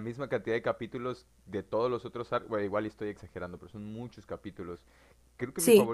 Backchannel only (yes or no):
yes